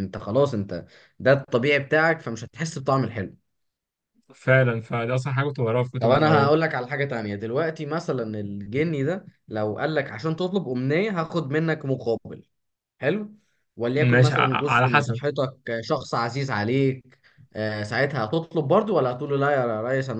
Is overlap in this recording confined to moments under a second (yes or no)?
no